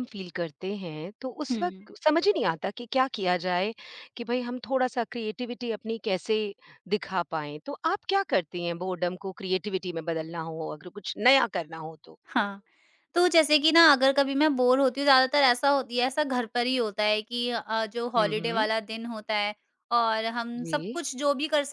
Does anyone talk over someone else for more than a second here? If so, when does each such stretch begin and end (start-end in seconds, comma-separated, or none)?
none